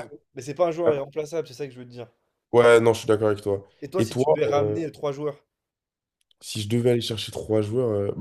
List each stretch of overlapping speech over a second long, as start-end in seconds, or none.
none